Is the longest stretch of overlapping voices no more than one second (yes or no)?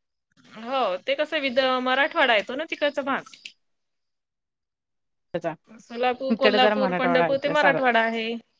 no